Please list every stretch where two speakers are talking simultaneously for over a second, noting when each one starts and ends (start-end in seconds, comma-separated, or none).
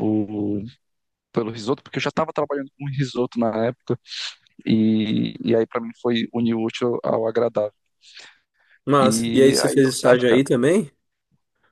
9.0-10.4